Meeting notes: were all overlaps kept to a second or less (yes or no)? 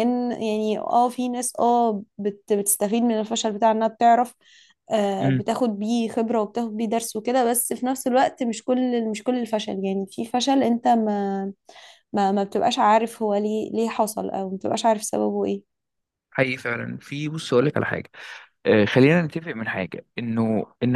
yes